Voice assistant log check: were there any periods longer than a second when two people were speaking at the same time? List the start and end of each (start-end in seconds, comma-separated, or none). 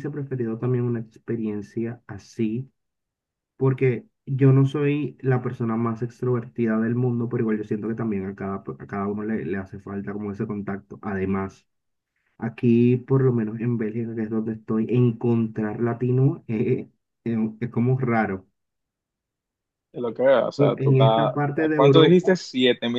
20.6-22.4